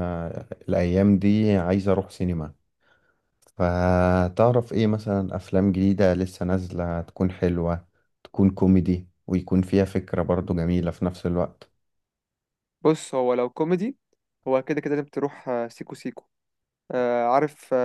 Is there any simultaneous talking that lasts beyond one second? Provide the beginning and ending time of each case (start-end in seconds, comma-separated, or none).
none